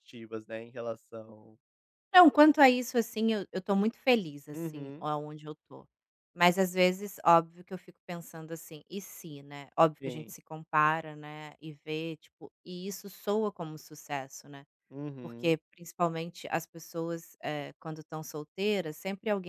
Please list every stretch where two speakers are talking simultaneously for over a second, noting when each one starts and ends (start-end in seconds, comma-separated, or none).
none